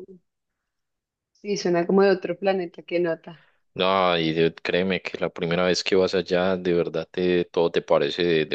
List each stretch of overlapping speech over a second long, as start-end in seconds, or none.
none